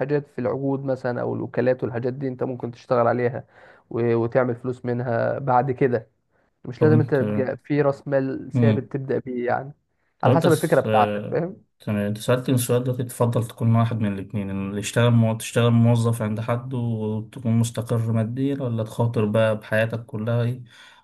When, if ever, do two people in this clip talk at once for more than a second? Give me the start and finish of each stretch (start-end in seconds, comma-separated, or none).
10.2-11.6